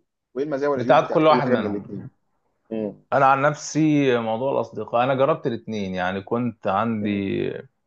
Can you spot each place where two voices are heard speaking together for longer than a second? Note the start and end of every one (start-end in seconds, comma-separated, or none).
0.7-2.1